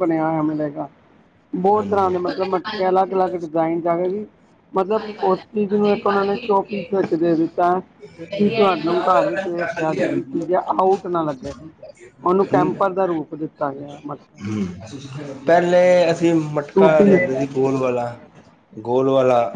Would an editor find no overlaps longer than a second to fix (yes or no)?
no